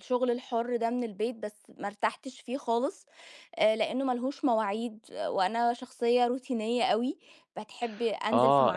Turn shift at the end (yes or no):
yes